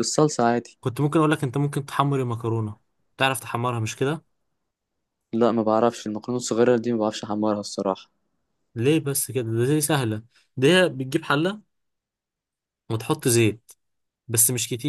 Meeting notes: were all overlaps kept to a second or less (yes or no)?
yes